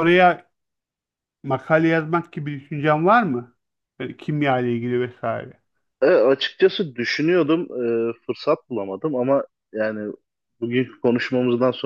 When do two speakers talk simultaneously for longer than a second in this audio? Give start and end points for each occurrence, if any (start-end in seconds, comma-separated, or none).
none